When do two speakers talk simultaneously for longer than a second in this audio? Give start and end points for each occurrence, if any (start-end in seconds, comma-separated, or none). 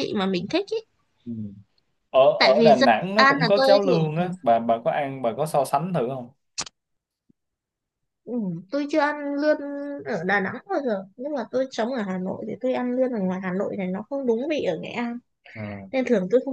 2.4-4.3